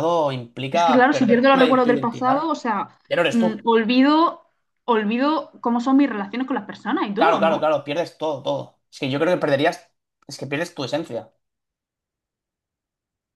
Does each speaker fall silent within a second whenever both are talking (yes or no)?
no